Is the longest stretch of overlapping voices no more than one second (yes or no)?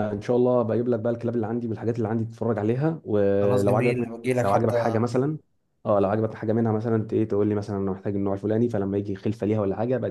no